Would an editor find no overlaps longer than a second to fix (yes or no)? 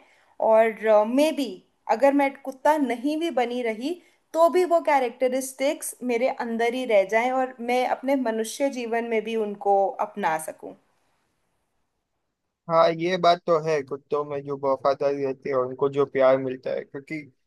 yes